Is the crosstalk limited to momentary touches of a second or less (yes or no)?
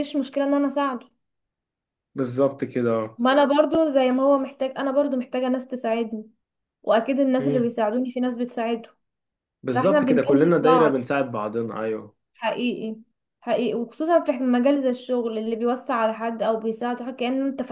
no